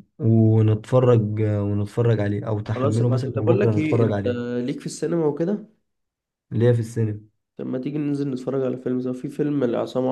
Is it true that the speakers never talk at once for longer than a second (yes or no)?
no